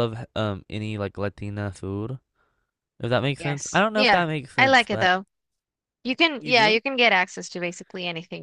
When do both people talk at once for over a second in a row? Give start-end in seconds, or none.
3.4-5.1